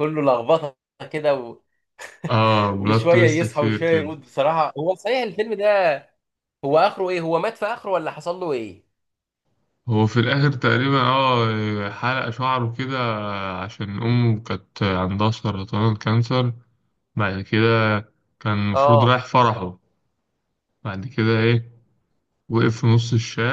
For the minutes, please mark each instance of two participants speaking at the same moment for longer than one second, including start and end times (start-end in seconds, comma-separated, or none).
2.8-4.1